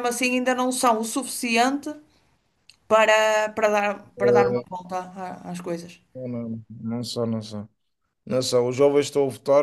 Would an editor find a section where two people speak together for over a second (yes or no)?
no